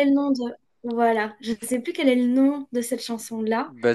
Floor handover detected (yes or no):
yes